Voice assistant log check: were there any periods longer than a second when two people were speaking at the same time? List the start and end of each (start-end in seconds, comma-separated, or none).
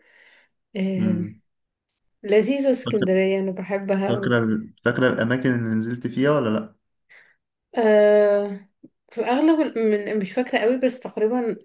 none